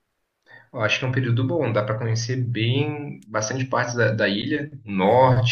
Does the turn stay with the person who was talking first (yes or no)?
yes